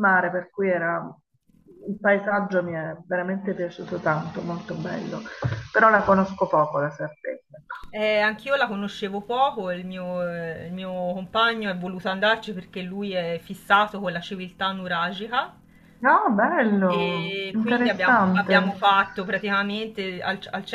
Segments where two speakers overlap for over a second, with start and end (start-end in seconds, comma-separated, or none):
16.9-18.7